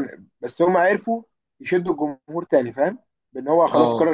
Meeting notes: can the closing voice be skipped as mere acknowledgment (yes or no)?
yes